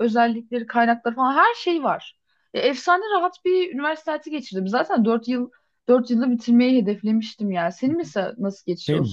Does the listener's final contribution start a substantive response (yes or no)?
yes